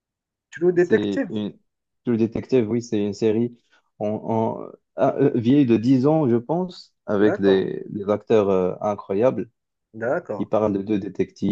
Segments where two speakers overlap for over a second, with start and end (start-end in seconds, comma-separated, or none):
none